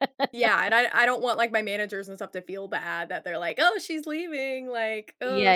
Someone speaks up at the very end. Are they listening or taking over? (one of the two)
taking over